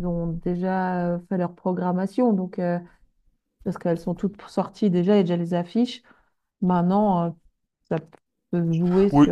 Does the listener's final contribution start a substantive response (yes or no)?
yes